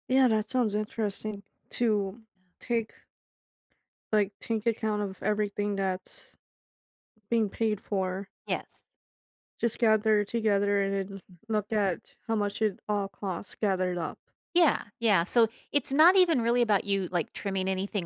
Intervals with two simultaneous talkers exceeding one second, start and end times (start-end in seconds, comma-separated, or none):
none